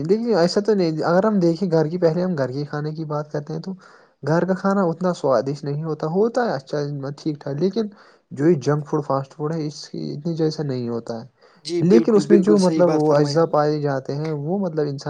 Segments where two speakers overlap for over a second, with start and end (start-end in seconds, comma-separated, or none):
11.7-13.6